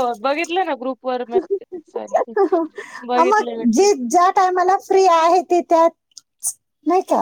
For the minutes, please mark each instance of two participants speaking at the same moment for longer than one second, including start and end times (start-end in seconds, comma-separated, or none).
none